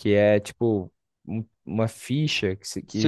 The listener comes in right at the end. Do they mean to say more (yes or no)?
yes